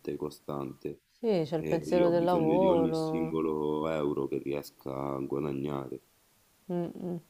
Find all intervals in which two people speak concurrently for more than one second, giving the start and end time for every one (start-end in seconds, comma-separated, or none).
1.6-3.4